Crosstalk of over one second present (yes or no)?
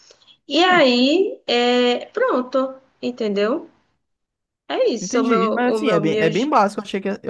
yes